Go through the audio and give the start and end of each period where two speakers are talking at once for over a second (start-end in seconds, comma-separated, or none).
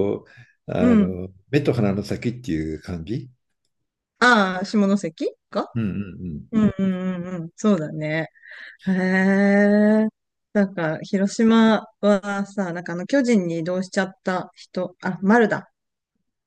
none